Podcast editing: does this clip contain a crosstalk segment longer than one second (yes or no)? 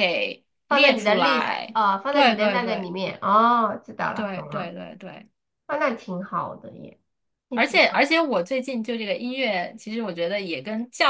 yes